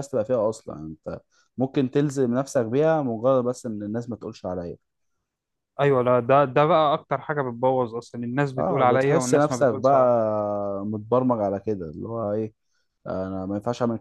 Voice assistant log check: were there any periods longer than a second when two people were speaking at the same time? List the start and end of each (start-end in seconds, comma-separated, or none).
8.6-10.1